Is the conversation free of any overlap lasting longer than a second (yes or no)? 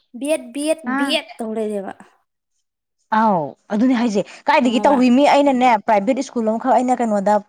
yes